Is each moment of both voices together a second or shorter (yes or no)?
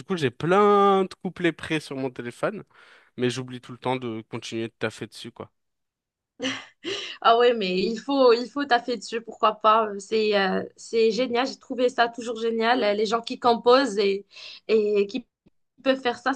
yes